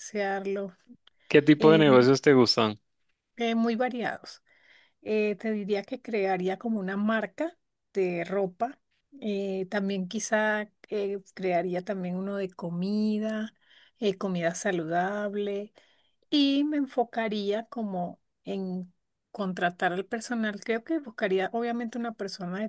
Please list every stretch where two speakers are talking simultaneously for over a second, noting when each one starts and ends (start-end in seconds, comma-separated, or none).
none